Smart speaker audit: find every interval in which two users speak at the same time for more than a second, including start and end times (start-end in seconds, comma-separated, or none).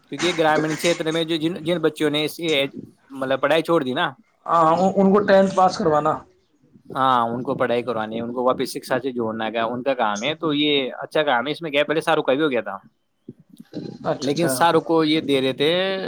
none